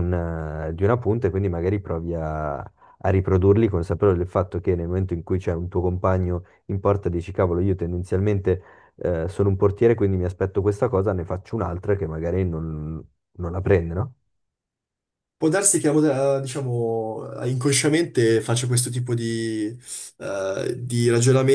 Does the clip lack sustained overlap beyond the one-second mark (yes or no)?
yes